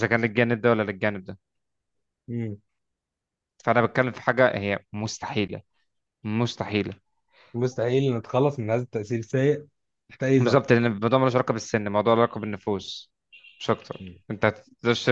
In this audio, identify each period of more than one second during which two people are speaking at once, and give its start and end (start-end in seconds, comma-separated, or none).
none